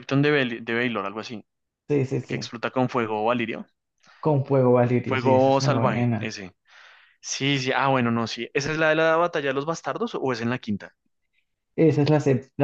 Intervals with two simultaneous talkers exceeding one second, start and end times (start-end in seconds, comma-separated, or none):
5.0-6.2